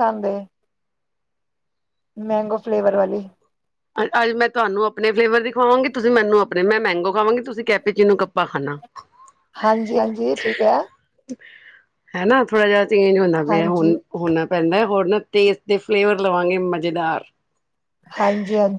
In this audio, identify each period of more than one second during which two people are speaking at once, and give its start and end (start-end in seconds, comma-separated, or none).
none